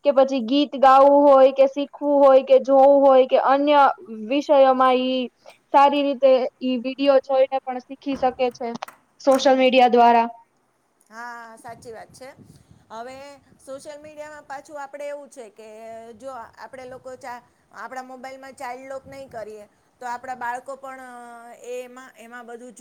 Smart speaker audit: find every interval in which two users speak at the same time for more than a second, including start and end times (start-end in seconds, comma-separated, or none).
none